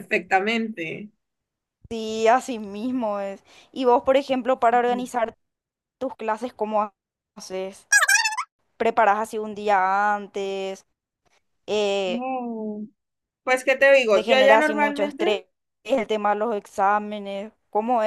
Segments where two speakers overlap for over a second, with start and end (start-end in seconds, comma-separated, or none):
14.1-15.3